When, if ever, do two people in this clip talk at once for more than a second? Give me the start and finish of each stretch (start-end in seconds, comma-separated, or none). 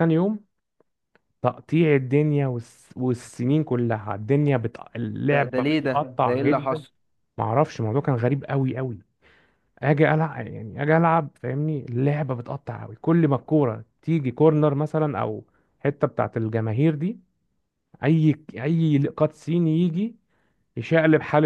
5.3-6.8